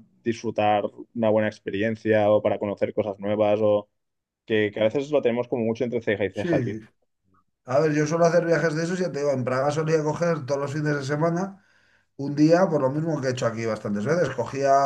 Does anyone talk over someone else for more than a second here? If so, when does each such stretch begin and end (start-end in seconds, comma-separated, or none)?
none